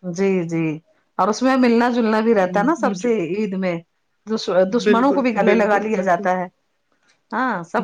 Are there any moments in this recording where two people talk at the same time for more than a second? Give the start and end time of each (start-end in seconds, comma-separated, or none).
4.7-6.3